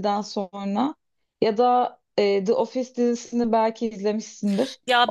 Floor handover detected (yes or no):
yes